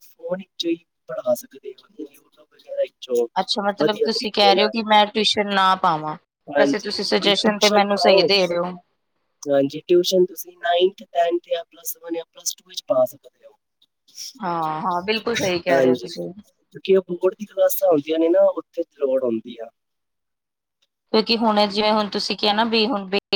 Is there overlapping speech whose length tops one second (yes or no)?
yes